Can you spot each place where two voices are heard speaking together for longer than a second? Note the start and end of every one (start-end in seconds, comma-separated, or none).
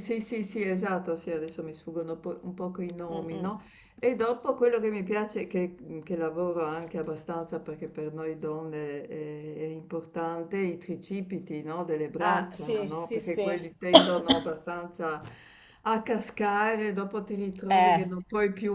12.2-13.6